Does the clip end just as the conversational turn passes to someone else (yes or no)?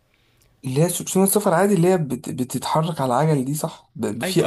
yes